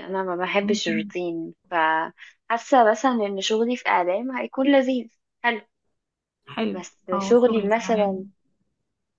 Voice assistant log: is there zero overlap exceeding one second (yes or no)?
no